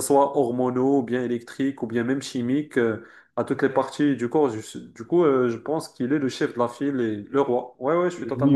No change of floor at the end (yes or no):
no